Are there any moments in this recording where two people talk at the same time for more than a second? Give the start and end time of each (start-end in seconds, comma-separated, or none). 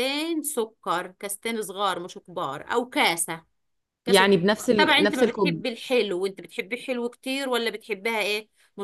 4.1-5.6